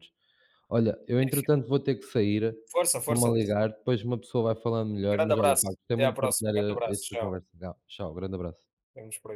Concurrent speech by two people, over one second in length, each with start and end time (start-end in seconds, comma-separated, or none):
5.1-7.4